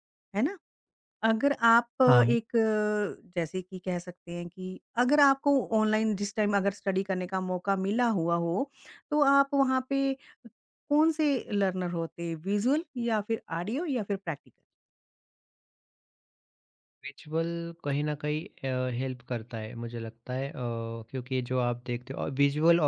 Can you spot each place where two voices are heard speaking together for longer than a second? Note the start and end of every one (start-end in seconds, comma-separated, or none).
none